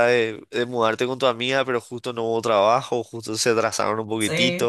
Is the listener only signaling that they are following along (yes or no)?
no